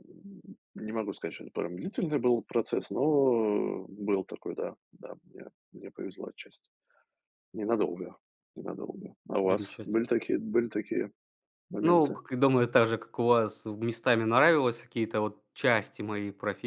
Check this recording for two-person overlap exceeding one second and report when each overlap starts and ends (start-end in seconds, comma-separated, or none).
none